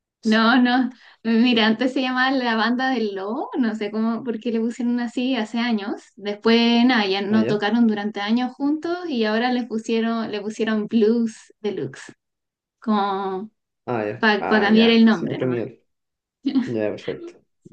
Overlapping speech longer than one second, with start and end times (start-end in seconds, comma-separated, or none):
14.2-15.6